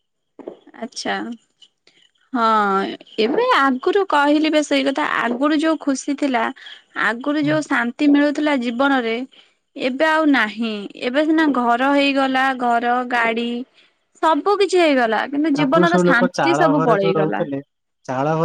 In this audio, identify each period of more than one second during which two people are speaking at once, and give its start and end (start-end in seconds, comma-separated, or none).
15.6-17.4